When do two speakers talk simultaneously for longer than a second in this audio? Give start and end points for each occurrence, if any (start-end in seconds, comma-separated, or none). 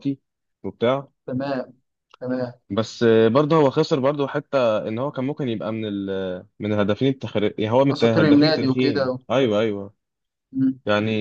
7.9-9.2